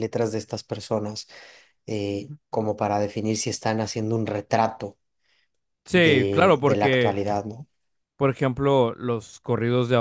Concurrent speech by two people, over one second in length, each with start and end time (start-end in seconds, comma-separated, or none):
5.9-7.2